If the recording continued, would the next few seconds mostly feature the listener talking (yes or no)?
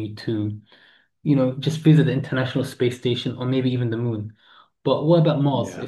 no